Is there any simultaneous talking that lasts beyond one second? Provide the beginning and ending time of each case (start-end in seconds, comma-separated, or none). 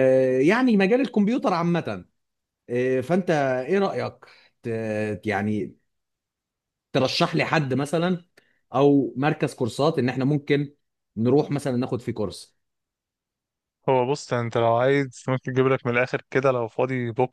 none